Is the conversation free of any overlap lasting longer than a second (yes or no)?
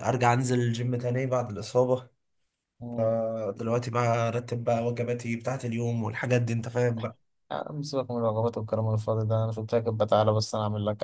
yes